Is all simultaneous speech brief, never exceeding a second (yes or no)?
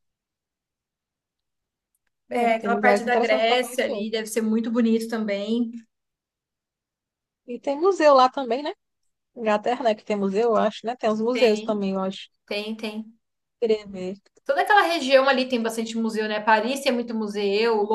no